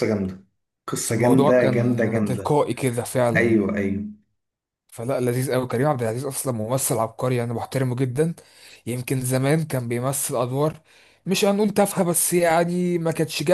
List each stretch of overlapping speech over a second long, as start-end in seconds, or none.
1.1-2.6